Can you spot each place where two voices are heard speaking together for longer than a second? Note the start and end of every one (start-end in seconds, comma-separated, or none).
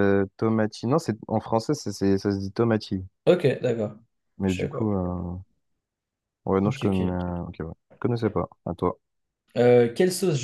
none